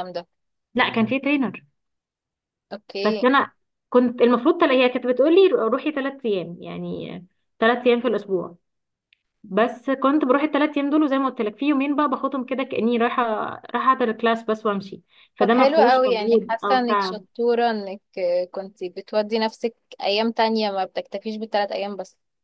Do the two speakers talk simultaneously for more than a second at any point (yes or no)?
yes